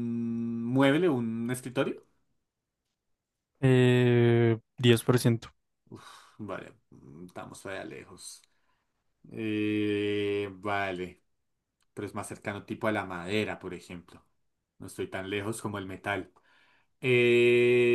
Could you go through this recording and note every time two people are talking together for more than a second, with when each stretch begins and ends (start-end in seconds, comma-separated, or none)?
none